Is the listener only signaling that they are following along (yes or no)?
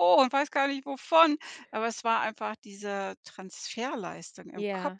no